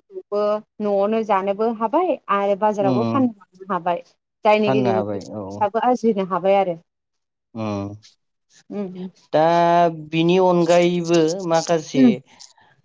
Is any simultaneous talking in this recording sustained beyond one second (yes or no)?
no